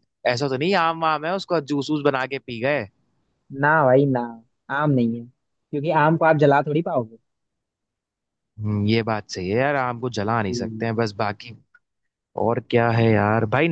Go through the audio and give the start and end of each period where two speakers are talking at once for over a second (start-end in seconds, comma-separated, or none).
none